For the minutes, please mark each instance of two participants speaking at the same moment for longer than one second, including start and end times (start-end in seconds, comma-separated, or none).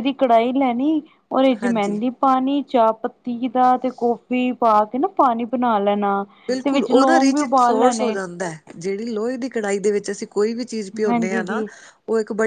6.6-8.2